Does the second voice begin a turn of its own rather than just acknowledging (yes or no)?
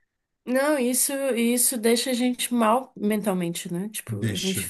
no